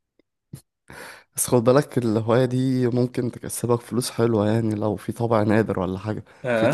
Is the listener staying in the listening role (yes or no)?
yes